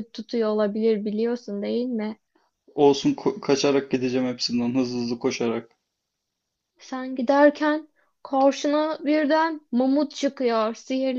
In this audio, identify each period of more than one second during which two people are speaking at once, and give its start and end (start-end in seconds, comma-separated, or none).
none